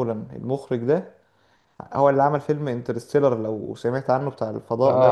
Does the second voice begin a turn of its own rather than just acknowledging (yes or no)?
yes